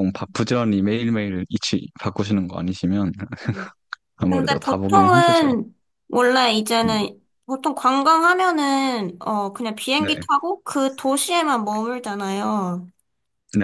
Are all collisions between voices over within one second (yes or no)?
no